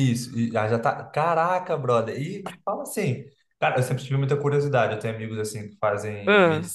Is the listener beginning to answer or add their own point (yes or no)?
no